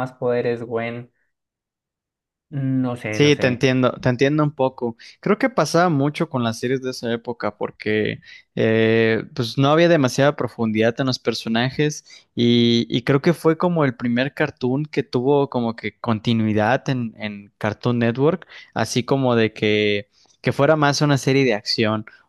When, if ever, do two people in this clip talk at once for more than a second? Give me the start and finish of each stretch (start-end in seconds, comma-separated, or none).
none